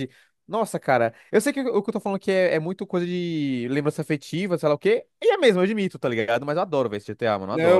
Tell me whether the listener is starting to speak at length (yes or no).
yes